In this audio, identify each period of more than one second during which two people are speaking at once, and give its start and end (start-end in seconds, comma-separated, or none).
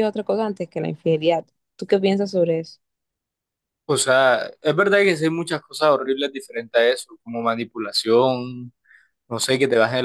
none